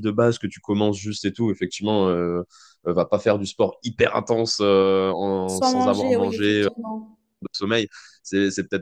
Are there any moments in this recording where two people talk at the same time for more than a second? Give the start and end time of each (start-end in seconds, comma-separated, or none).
5.5-6.7